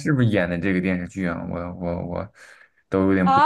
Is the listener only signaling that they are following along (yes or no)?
no